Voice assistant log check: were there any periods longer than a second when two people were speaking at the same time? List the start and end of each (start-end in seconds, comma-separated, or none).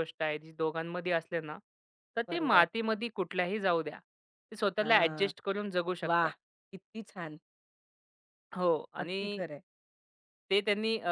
none